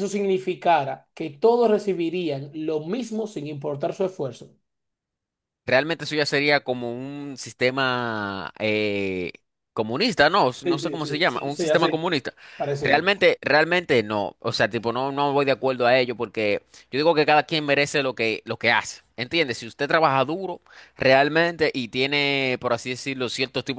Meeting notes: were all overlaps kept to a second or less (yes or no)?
no